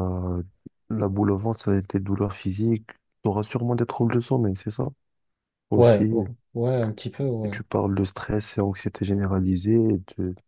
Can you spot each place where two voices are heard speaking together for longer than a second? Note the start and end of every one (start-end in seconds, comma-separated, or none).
none